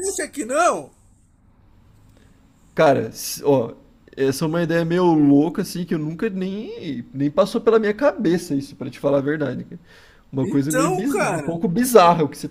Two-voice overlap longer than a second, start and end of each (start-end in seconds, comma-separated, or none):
10.4-11.6